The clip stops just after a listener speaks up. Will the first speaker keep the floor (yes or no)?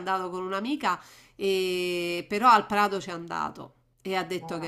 yes